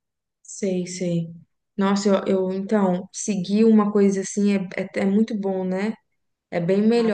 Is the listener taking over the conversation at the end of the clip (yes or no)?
no